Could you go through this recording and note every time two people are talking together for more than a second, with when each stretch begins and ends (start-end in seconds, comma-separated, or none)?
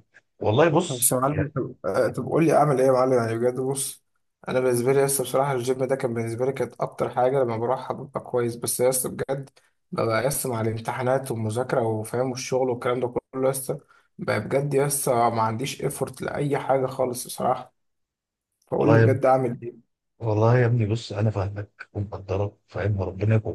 none